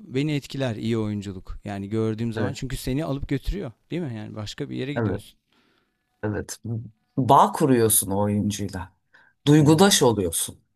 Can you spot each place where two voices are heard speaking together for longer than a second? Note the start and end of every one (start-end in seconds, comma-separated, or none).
none